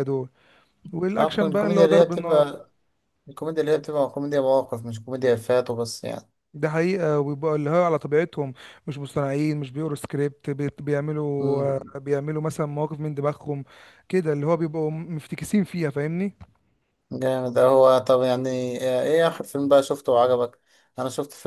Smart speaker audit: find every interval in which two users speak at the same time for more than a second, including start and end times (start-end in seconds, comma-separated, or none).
1.2-2.5